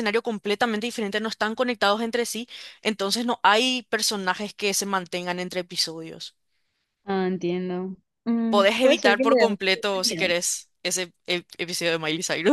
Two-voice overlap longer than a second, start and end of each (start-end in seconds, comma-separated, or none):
8.5-10.3